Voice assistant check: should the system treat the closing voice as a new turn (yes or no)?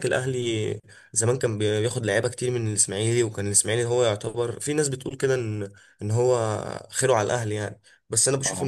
no